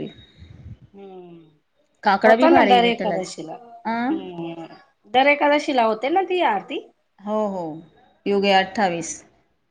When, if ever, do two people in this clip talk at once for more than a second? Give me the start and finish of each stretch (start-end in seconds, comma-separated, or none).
2.3-4.2